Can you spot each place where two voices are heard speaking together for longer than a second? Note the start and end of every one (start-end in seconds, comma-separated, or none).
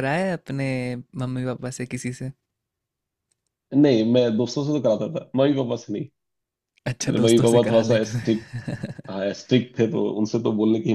7.0-8.5